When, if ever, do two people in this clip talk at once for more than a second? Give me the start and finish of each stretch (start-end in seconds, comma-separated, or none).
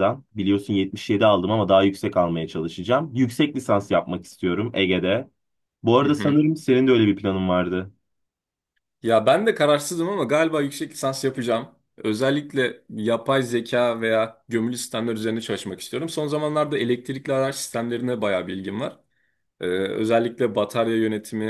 none